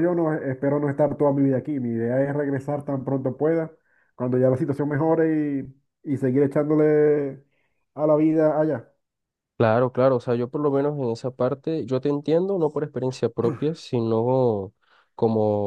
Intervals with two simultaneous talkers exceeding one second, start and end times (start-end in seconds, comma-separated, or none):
none